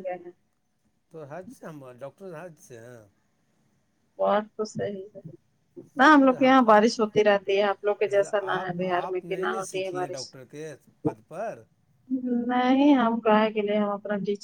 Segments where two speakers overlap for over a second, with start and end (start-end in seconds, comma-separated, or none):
8.1-10.3